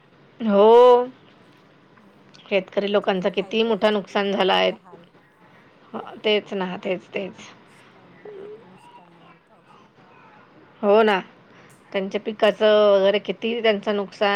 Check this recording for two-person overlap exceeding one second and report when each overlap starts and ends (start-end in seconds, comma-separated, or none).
2.8-4.7